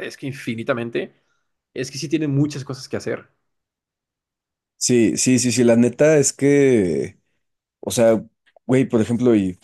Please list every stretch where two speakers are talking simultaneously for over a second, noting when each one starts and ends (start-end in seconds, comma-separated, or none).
none